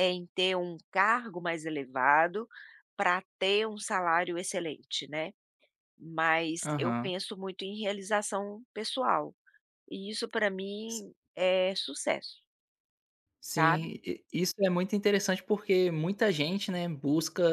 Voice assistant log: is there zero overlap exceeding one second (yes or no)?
yes